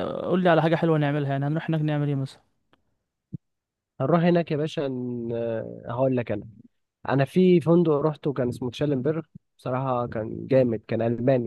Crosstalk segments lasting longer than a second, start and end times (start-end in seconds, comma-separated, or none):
none